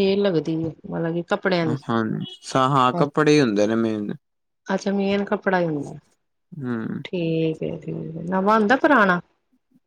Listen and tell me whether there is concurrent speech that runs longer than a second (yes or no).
no